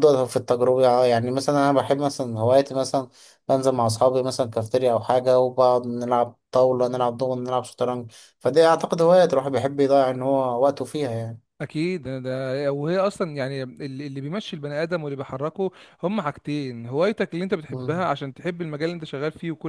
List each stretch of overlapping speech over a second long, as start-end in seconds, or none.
none